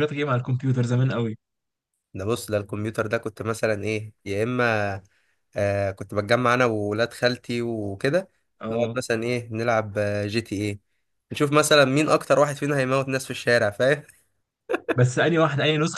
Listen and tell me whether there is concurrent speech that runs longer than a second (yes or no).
no